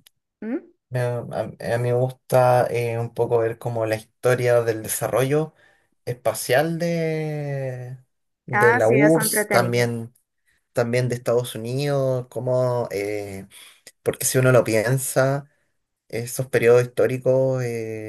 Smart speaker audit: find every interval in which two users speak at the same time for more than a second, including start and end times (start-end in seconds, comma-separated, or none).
8.5-9.9